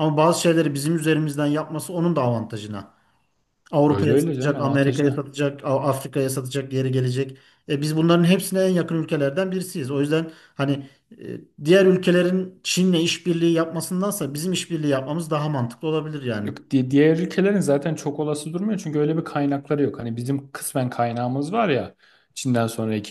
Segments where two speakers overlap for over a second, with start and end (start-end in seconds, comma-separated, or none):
3.9-5.2